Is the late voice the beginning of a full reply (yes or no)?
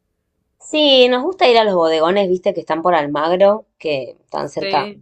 no